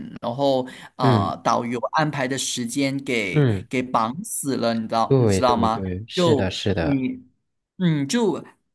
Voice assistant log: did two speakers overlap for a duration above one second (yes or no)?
yes